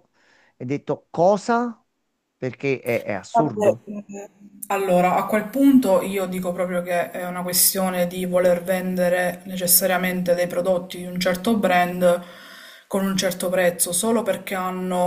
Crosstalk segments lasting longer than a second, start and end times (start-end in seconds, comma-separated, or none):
none